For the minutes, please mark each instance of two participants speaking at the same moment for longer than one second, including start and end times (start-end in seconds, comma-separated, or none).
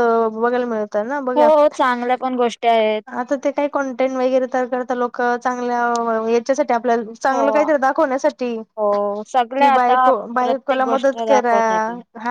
9.6-11.5